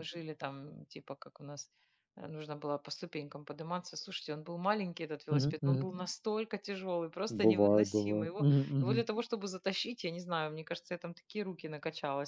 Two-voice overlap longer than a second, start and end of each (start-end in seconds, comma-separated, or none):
7.3-9.0